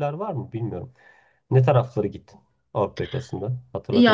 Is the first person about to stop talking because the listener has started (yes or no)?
yes